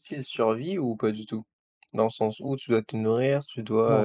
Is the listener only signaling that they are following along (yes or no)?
no